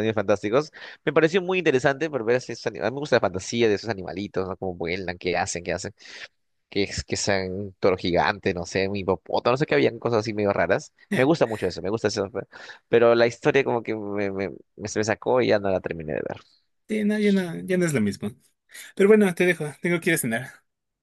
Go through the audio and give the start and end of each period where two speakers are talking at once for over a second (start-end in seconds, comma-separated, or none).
none